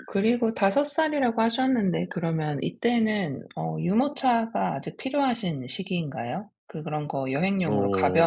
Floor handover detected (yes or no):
no